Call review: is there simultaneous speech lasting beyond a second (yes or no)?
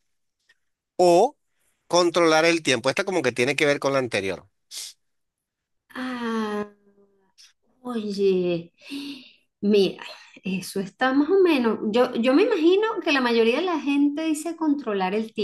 no